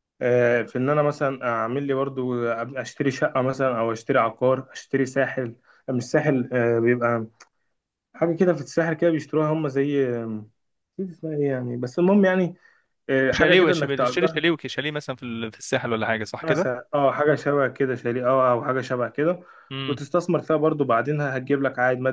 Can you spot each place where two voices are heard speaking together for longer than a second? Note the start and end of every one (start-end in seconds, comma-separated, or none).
13.3-14.6